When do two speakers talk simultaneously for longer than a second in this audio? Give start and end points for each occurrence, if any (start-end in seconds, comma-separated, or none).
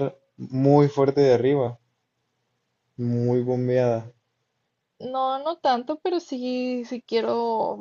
none